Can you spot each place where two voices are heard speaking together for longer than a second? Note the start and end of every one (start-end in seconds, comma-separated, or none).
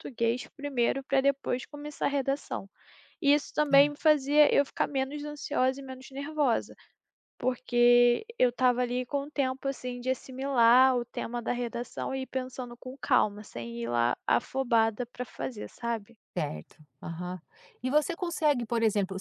none